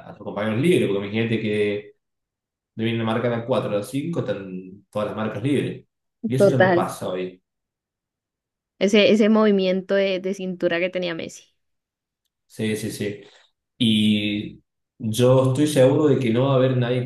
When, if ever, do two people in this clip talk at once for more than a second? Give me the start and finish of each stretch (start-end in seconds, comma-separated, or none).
none